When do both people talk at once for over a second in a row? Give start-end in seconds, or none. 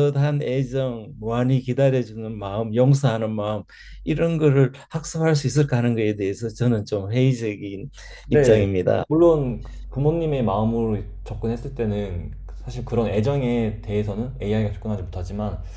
none